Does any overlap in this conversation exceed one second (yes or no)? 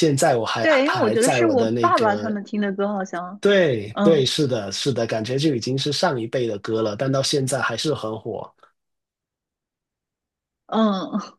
yes